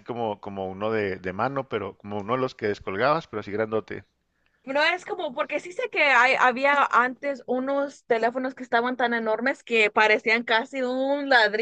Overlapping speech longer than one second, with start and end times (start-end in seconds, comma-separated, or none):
none